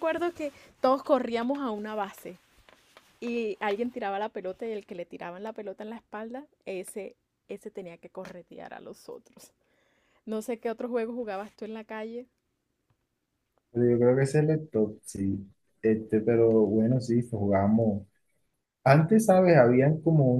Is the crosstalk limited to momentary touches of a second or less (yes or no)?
yes